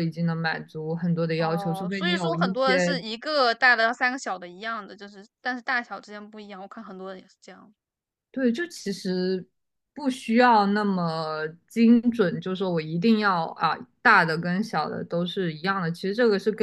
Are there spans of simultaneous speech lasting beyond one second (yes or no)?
yes